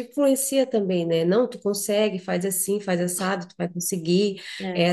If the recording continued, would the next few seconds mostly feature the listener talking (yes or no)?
no